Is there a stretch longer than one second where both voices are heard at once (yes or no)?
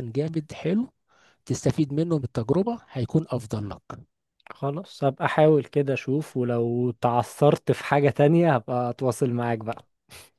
no